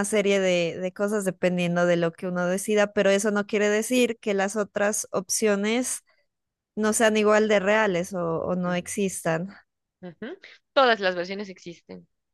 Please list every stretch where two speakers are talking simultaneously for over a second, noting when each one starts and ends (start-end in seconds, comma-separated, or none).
none